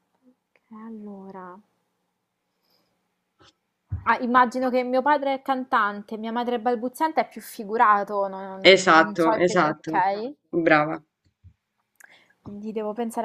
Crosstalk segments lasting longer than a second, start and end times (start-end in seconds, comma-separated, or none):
8.7-10.0